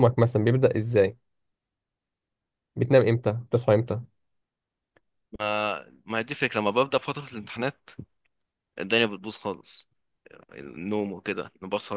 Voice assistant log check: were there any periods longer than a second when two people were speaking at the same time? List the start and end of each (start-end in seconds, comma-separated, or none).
none